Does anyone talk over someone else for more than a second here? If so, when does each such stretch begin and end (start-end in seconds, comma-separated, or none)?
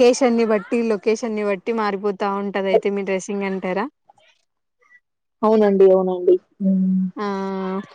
none